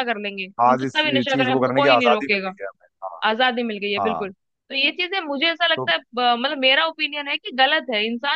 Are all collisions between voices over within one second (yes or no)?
no